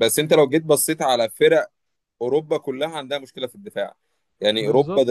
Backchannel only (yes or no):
yes